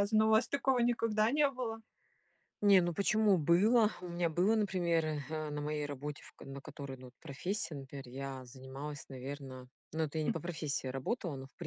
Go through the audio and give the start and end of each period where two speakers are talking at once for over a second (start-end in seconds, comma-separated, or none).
none